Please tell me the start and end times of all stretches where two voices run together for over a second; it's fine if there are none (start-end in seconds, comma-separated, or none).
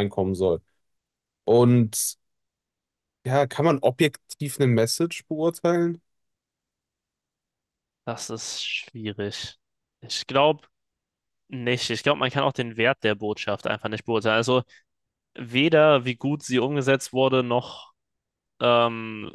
none